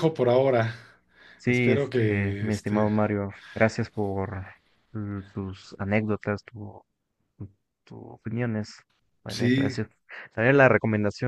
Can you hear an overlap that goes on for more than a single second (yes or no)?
yes